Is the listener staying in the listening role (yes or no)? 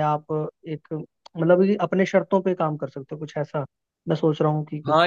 no